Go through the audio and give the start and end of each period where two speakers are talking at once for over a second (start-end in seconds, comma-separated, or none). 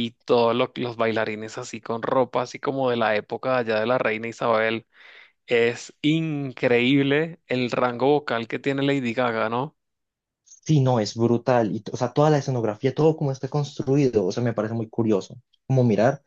none